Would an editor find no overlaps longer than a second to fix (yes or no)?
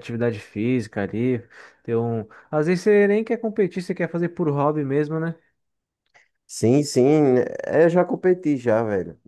yes